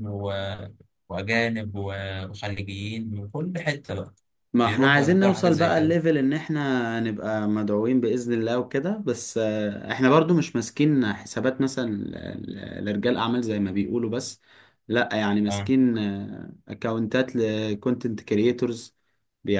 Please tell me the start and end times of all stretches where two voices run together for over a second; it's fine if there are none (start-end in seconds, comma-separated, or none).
4.7-6.0